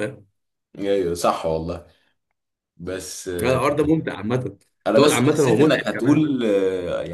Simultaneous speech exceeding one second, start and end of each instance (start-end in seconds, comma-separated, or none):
4.9-6.2